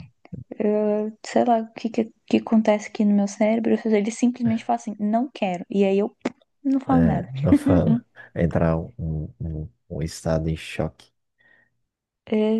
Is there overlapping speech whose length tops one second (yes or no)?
no